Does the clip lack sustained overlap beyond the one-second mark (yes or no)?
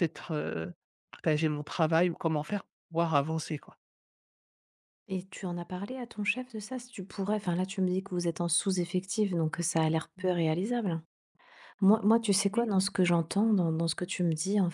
yes